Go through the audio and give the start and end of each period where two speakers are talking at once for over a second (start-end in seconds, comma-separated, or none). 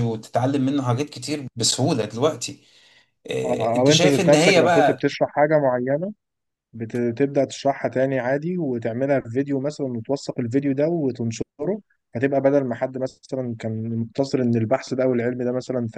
3.4-5.1